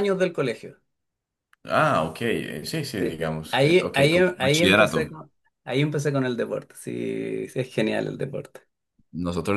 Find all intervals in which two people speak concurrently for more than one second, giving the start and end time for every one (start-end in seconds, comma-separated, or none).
3.0-5.1